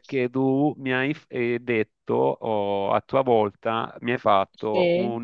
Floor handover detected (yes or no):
no